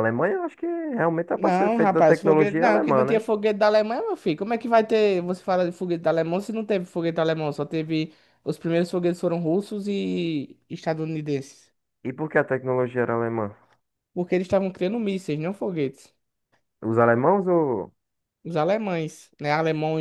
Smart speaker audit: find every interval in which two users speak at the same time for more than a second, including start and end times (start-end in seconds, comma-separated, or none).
1.4-3.3